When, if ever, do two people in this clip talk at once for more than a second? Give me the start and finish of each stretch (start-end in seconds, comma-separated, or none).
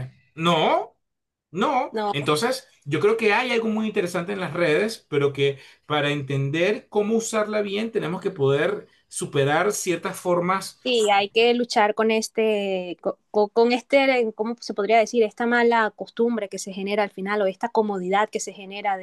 none